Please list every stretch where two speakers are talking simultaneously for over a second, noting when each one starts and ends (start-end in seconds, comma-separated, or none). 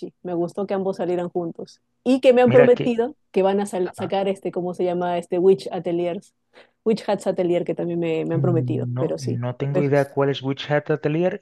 8.3-9.9